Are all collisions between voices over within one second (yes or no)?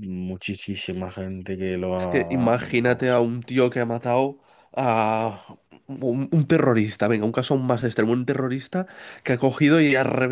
no